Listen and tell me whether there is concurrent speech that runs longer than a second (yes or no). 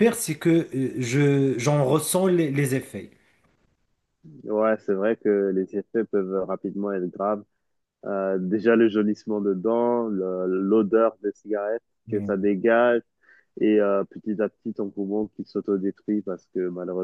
no